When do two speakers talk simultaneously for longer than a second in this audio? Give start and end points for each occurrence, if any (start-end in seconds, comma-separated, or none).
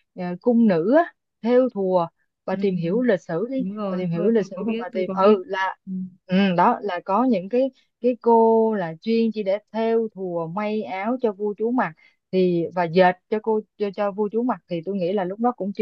3.6-5.4